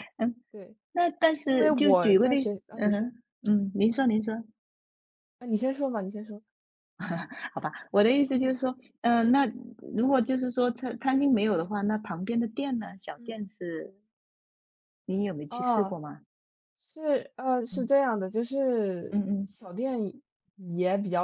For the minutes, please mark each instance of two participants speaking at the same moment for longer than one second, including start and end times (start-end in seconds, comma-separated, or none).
1.4-3.1